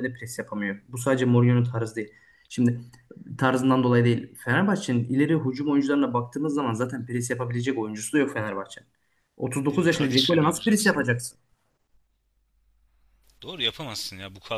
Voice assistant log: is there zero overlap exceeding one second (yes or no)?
no